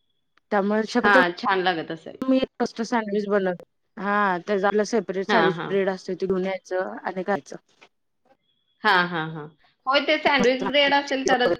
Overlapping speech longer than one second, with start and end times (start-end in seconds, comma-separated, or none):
none